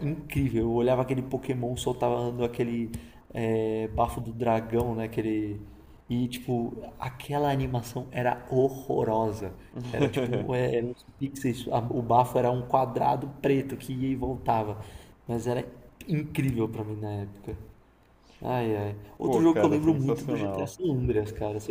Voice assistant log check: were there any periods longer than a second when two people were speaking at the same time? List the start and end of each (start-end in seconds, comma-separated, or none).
19.2-20.7